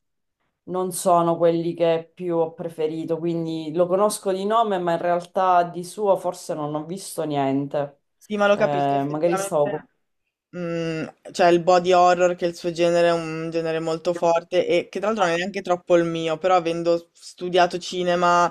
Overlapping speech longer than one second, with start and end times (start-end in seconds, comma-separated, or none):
8.5-9.9